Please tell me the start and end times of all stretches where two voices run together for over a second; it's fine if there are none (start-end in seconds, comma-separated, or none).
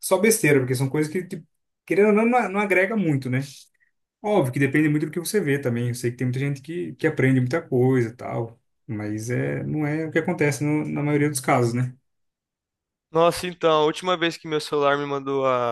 none